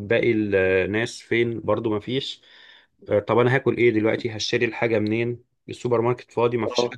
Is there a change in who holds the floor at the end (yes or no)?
yes